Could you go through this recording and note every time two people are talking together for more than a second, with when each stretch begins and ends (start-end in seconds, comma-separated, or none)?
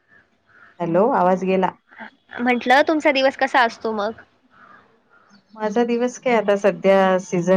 none